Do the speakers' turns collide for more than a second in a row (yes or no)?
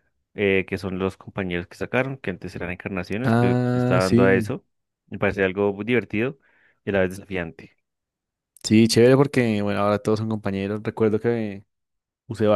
yes